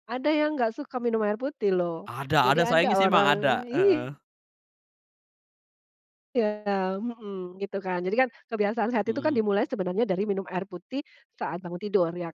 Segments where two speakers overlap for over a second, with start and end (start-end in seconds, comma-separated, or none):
2.0-4.2